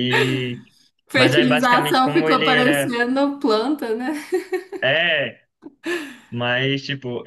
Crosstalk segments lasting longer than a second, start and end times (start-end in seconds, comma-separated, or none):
1.1-2.9